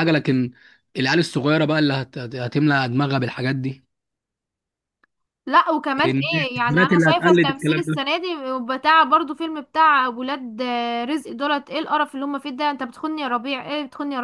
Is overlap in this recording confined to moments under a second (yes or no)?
no